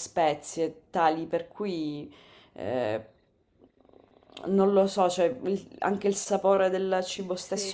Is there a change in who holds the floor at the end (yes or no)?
yes